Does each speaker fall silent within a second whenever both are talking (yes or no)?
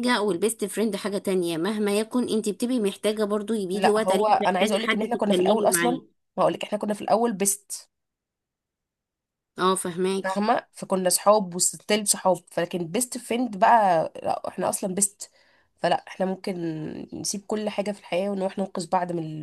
no